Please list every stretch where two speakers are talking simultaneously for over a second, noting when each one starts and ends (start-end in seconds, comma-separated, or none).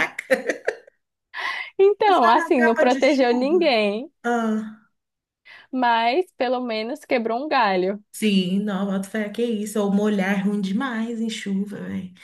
2.1-3.7